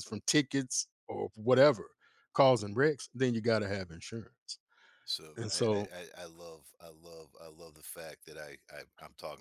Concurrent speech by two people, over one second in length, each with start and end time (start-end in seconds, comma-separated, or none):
none